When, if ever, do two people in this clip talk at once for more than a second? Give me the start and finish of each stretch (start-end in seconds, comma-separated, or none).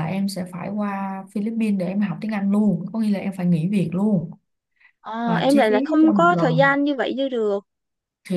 5.2-6.8